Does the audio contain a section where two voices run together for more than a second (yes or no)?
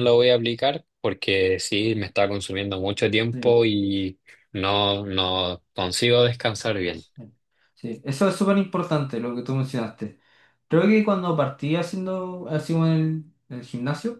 no